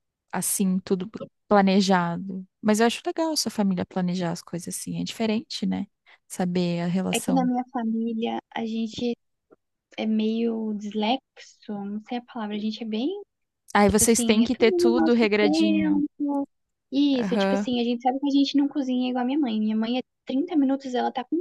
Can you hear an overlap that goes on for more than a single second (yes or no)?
yes